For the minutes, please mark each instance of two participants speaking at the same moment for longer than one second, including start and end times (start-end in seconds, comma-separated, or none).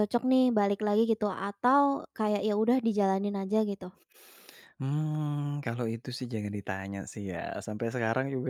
none